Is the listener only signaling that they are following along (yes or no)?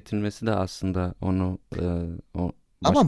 no